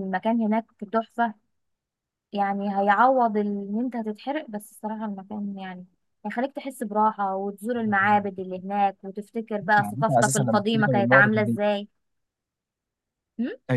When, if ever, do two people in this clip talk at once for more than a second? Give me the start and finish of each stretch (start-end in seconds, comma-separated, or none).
9.8-11.6